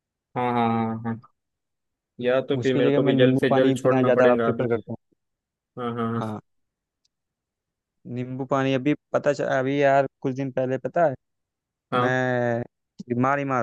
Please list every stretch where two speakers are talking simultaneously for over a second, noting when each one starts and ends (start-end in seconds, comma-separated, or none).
2.6-4.7